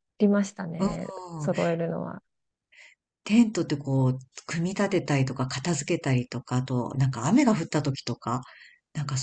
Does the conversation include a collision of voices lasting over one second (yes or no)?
no